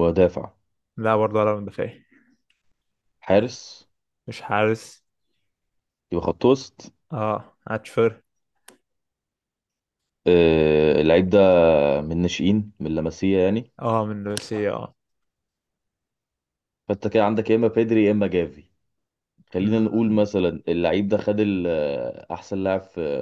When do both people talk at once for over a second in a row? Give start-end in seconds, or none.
none